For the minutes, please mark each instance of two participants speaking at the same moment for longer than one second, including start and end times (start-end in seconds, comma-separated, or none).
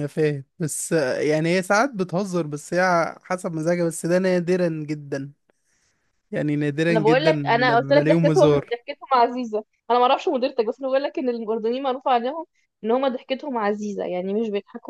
6.9-8.8